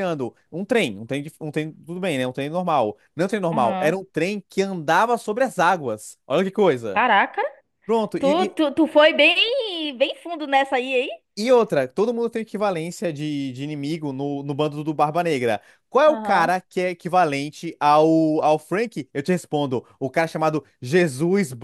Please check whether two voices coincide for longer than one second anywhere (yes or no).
no